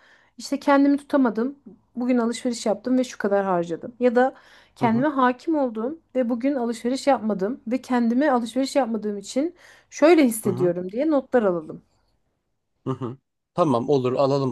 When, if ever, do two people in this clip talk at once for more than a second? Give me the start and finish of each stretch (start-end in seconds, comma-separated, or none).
none